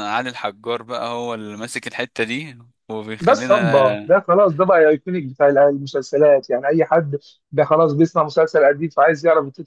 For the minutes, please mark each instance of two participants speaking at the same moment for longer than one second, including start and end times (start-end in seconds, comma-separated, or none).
none